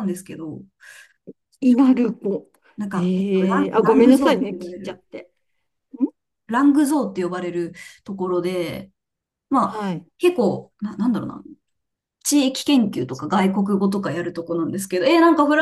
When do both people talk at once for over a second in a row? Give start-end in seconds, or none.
2.9-5.0